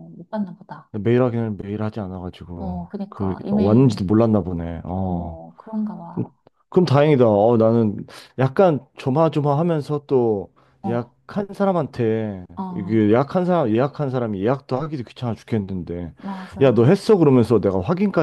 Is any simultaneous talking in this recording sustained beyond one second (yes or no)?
yes